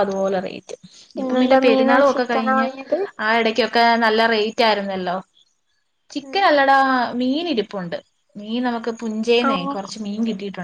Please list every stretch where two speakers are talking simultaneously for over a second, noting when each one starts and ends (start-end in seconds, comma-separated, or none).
1.2-2.7